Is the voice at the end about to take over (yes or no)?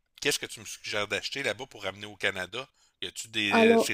no